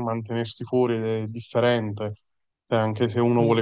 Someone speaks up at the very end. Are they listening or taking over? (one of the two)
listening